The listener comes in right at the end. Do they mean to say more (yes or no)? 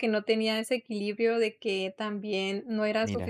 no